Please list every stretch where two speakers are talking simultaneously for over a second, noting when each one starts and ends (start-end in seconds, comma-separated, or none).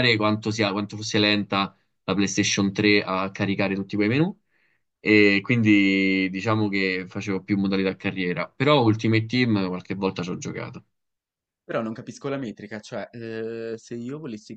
none